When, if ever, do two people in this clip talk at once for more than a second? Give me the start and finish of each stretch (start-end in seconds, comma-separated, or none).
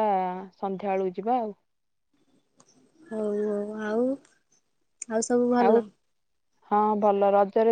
none